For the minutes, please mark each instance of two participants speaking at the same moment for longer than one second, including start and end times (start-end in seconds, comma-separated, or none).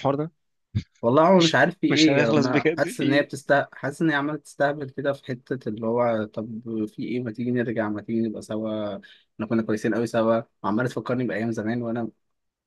1.4-3.3